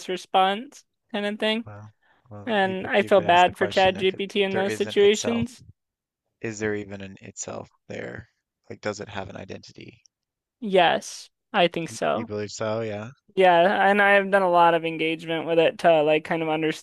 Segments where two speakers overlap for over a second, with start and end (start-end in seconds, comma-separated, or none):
2.5-5.4